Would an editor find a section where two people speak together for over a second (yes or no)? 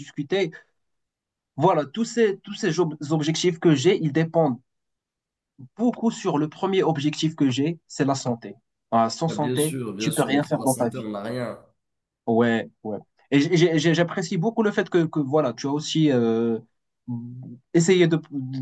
yes